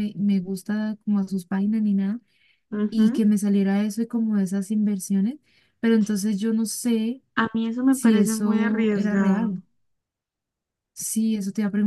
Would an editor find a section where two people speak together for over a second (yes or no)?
yes